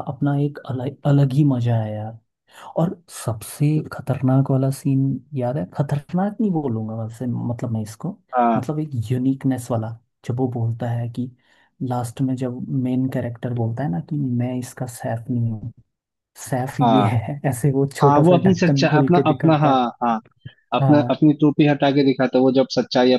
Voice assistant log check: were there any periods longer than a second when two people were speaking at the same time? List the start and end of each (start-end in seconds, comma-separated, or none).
18.0-19.9